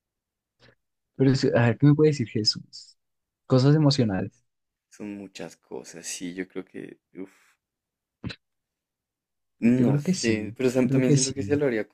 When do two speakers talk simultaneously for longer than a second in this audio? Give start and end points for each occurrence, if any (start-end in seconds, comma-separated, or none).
9.8-11.3